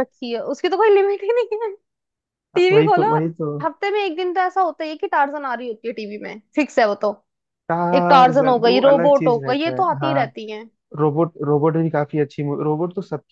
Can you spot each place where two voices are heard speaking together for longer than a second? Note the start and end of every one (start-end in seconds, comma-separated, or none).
8.0-10.2